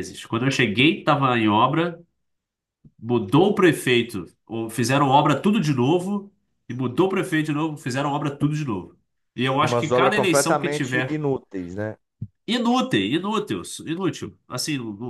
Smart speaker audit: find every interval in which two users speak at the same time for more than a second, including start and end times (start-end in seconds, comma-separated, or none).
9.6-11.2